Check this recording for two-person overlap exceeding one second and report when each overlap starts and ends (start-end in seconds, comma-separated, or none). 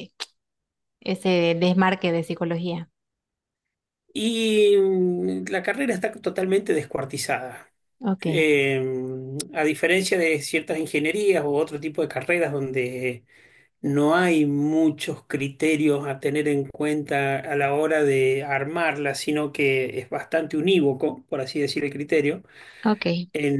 none